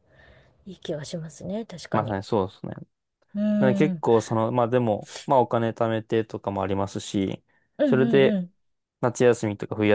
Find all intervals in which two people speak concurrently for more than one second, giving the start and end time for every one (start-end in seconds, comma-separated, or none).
none